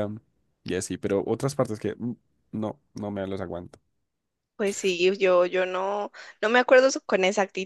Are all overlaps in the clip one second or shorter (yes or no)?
yes